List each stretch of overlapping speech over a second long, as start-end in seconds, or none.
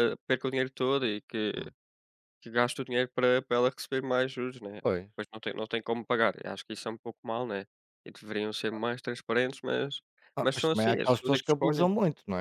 10.4-11.9